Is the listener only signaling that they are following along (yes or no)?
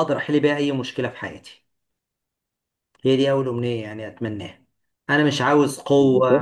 yes